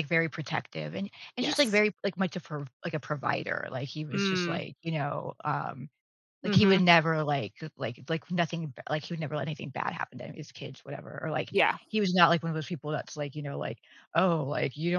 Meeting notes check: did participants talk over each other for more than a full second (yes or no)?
no